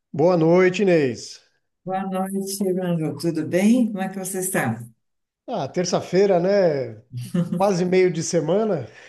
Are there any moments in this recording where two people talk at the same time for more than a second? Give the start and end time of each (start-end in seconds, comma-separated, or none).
none